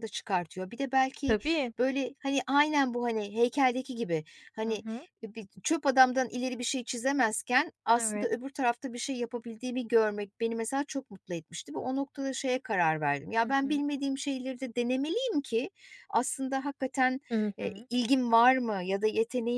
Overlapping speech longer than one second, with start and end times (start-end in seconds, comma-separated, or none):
none